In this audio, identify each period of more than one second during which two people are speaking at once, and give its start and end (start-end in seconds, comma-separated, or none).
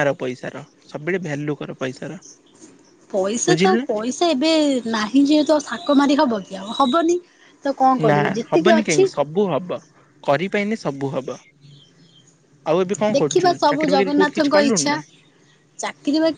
13.2-15.0